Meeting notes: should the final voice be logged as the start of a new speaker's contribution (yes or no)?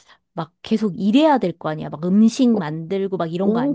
yes